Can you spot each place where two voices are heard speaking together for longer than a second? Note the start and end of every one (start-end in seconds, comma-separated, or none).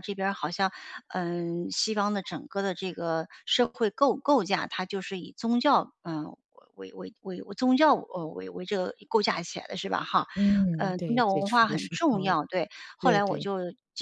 10.8-12.3